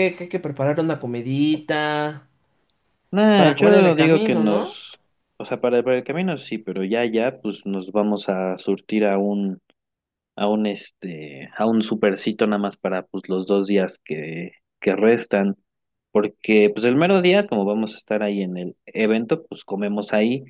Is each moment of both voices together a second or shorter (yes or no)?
no